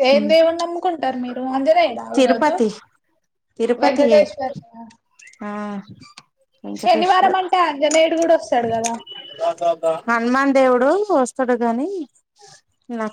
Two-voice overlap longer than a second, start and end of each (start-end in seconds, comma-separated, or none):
none